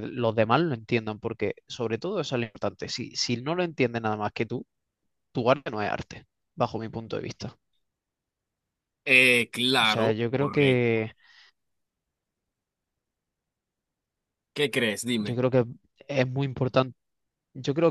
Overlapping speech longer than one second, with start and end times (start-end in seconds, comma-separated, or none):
9.8-11.0